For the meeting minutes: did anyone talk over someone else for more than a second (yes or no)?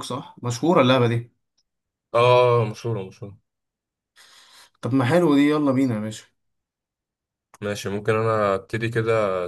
no